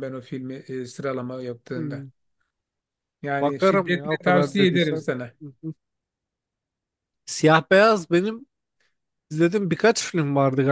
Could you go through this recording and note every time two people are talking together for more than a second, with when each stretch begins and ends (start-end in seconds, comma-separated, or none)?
3.4-5.0